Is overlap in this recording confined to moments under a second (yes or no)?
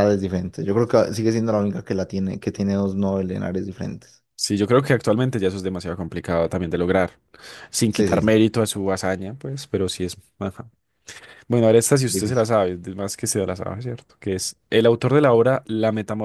yes